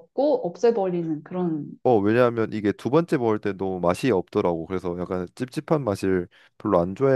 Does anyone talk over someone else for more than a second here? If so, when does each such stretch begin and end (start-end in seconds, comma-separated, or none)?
none